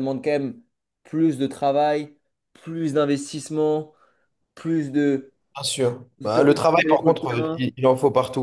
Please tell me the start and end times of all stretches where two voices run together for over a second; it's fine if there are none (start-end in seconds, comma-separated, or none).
6.2-7.7